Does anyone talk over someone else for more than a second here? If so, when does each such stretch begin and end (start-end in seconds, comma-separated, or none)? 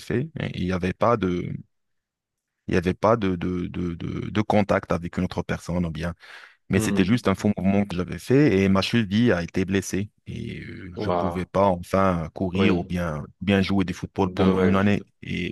none